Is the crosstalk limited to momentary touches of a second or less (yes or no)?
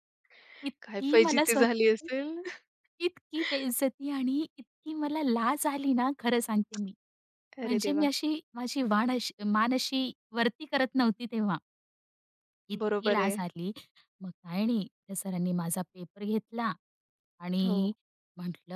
no